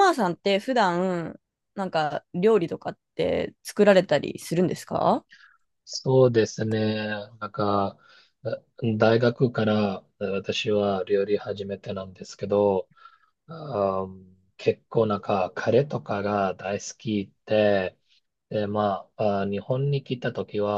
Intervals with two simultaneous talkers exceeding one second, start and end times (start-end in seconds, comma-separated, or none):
none